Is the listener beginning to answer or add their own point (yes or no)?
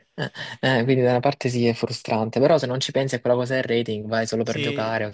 yes